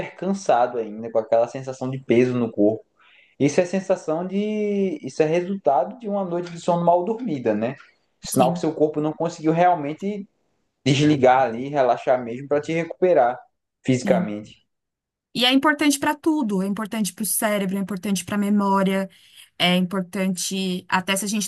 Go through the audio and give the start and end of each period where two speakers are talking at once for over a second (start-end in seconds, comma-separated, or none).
none